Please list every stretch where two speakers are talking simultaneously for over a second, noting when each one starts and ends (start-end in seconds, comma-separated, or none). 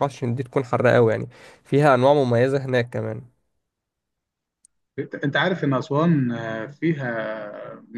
none